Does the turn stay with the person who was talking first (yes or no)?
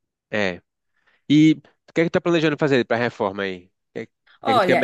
no